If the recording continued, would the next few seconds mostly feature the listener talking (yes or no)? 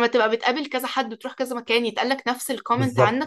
yes